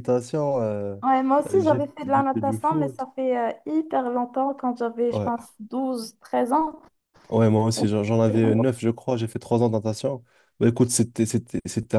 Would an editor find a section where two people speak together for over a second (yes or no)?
yes